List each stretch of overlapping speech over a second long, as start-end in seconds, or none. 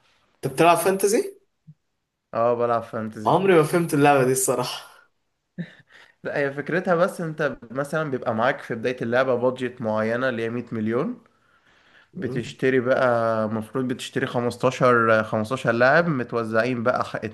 none